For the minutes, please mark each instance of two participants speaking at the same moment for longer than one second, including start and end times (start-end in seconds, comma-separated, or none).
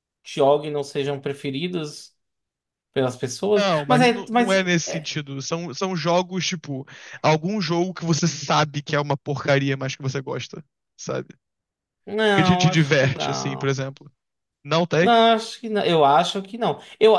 3.5-5.1, 12.3-13.8